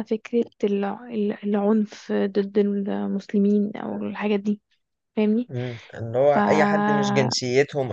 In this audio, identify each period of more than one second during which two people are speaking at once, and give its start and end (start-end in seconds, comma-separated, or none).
none